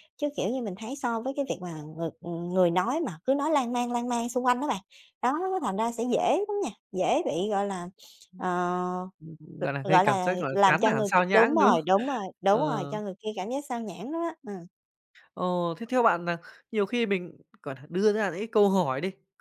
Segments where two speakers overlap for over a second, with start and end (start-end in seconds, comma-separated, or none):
9.9-11.8